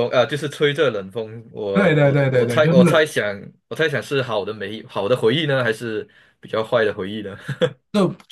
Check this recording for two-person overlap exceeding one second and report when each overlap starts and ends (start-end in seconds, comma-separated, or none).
1.7-3.1